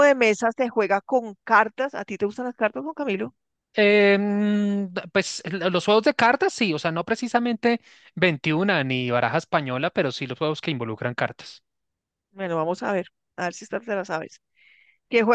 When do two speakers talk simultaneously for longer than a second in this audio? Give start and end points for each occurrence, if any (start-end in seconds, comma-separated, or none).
none